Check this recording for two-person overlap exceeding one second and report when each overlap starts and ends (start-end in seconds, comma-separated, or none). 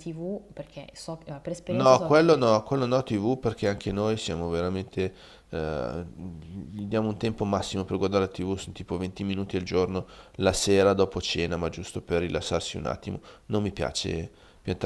none